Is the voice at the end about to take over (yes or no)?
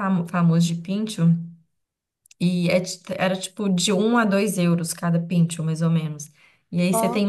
no